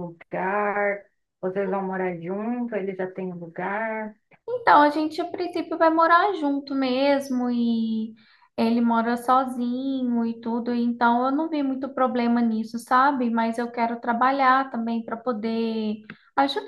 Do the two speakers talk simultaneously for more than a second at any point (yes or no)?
no